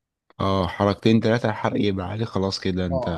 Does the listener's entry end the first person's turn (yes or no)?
yes